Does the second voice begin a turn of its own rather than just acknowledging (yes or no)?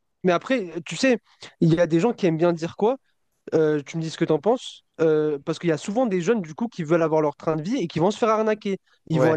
no